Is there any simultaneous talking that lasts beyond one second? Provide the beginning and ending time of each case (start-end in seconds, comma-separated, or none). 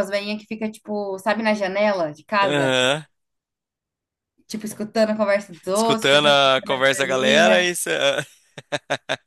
5.7-7.7